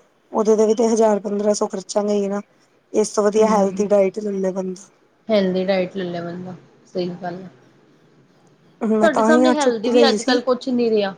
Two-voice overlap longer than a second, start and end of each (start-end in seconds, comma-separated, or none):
9.0-10.4